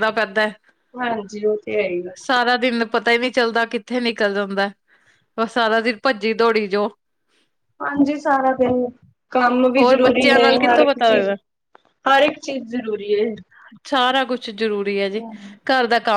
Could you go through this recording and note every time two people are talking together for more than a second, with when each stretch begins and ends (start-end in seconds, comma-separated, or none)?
9.8-11.3